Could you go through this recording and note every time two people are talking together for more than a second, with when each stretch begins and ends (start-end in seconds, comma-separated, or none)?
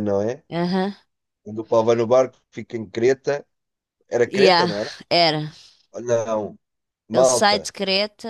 none